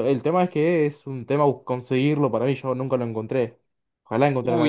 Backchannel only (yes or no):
no